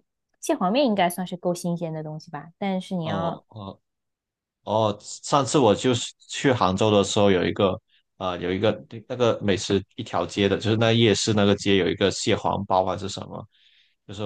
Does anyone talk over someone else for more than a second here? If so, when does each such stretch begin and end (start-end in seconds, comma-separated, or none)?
none